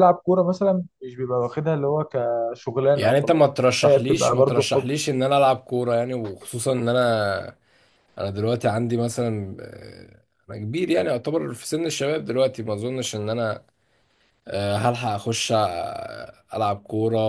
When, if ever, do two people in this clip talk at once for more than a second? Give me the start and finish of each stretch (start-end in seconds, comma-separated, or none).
3.0-4.9